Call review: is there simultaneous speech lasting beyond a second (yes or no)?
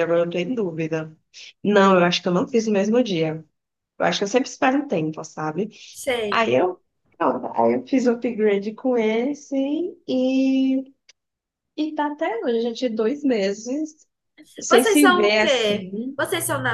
yes